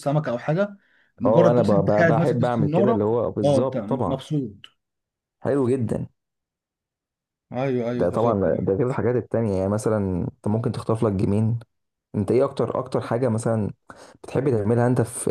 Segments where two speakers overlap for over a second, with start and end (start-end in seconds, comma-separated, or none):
1.2-4.2